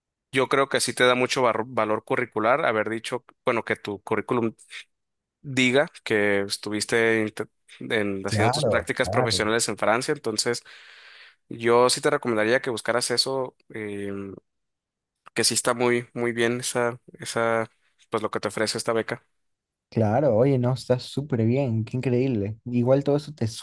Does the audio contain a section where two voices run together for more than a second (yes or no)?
yes